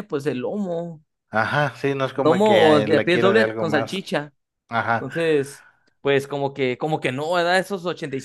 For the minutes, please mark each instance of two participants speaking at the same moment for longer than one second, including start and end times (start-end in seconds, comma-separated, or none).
2.2-4.0